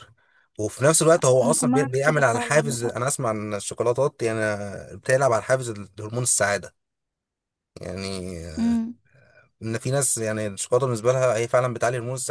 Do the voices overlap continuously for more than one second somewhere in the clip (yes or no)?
yes